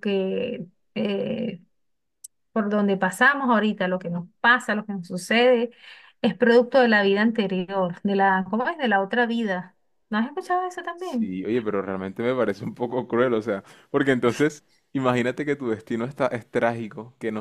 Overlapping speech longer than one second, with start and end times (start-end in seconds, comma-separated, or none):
none